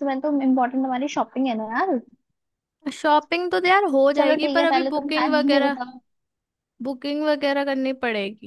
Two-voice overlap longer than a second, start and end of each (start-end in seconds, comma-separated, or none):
4.2-5.8